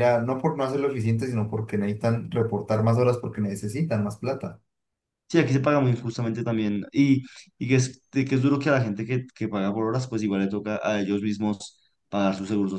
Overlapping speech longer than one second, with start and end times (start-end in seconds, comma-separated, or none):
none